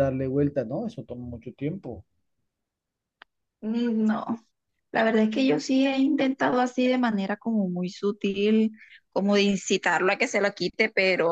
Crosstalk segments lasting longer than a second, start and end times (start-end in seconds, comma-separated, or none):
none